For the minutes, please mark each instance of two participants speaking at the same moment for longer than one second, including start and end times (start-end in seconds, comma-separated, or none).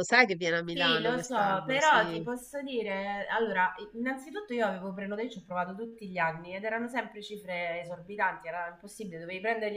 0.7-2.2